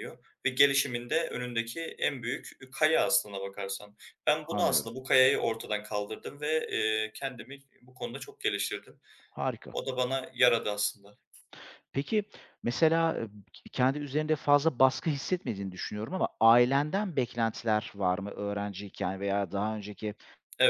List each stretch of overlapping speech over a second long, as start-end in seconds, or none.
none